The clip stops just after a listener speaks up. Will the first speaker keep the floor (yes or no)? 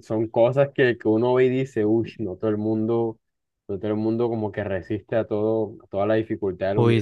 no